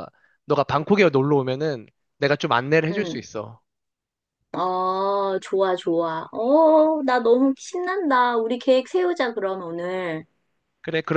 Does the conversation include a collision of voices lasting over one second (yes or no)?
no